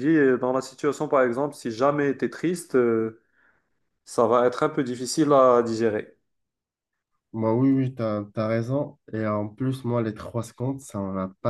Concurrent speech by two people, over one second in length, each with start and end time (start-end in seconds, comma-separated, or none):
none